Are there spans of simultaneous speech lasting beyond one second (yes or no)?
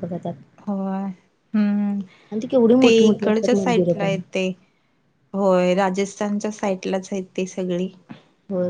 yes